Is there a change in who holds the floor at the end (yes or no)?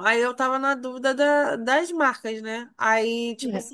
no